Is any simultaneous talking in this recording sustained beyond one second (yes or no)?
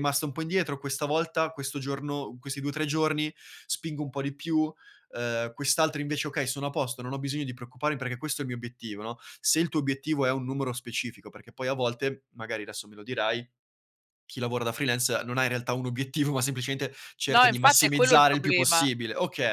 yes